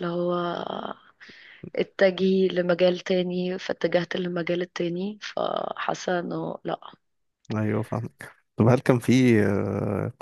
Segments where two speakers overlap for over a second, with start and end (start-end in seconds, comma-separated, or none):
none